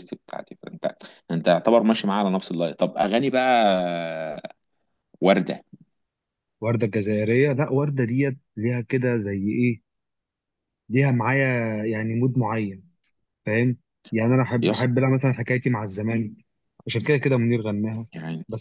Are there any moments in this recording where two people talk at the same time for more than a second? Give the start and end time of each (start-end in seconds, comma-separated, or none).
none